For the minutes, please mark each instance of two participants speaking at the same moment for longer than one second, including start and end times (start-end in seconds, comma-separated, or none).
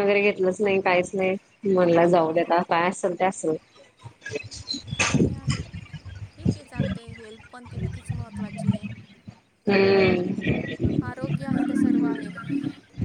none